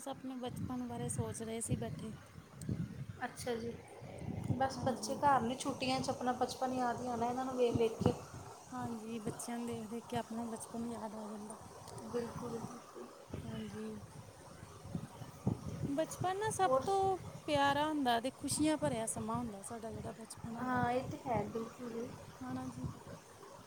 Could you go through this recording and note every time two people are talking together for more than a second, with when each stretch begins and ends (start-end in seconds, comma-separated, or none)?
none